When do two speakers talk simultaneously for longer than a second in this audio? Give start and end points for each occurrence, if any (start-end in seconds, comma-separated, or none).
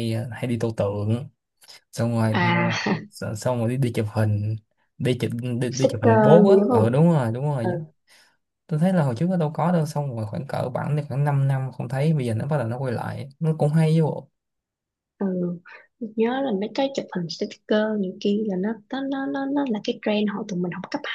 5.7-7.0